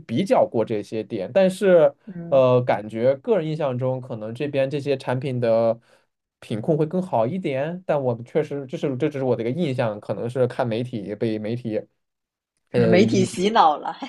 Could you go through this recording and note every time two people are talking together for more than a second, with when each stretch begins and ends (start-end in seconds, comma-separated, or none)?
none